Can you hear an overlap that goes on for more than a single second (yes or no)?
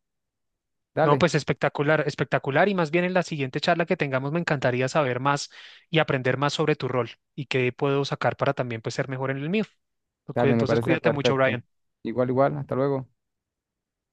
yes